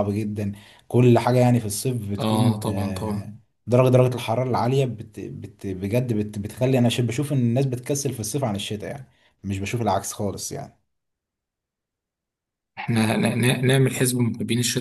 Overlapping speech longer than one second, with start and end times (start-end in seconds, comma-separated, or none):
2.2-3.4